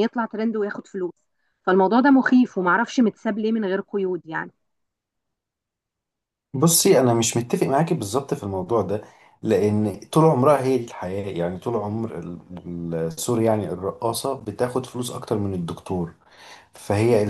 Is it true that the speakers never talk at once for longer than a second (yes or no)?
yes